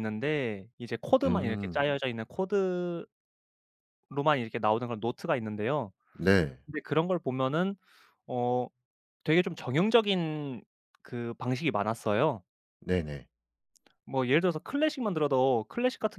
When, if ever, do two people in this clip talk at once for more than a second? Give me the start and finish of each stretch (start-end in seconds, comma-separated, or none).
none